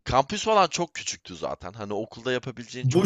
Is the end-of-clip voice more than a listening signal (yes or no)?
yes